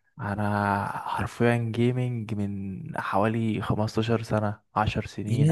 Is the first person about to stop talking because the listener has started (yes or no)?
yes